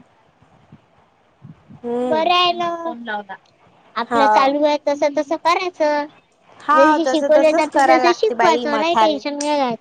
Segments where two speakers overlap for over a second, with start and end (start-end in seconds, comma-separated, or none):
6.8-9.2